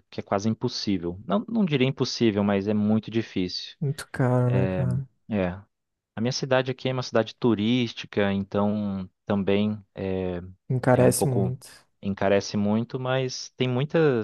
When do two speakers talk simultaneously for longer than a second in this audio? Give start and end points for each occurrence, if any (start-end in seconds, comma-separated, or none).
none